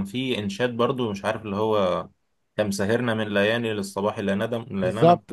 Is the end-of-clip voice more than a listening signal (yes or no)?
yes